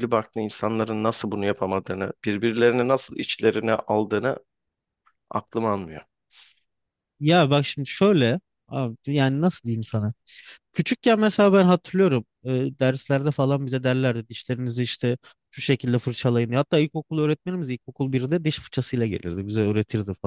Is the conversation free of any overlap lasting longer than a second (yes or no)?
yes